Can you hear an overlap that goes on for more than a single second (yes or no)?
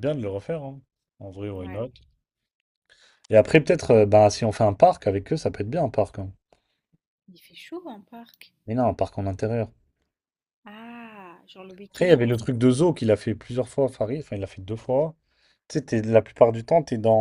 no